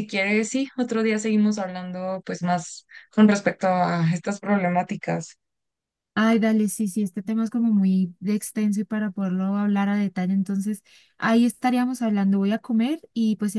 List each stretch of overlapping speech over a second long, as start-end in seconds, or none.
none